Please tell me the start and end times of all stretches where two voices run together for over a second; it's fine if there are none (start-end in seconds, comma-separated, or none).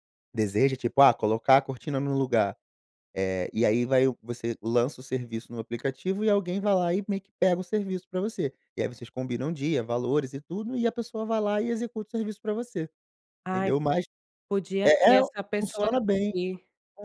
14.8-16.3